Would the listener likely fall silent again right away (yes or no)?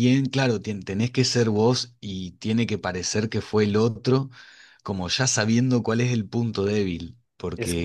yes